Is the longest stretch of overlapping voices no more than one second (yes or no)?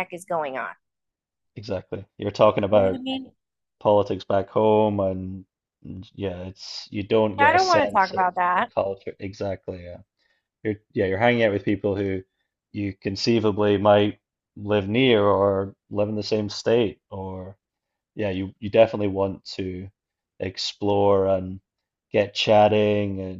no